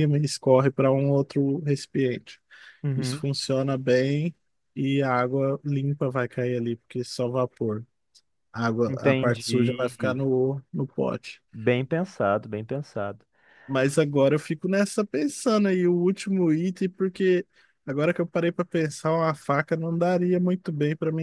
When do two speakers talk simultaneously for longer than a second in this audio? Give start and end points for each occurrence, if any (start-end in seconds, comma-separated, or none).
8.9-10.2